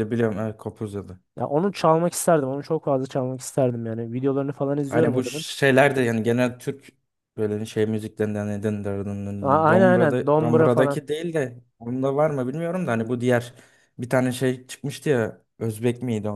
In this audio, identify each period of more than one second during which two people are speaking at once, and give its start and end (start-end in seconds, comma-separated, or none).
9.4-11.0